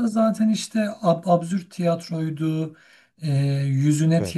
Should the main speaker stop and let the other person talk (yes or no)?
no